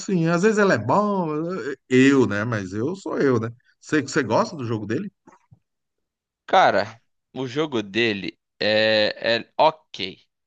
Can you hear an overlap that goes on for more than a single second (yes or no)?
no